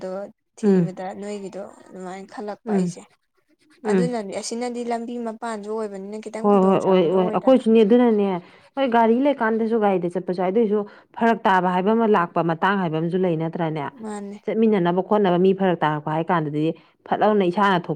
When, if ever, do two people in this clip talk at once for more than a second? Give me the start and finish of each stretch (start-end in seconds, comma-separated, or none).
6.4-7.6